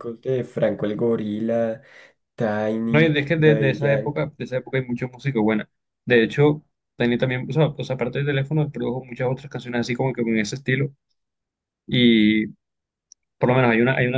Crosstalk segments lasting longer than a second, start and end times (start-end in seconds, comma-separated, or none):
2.9-4.2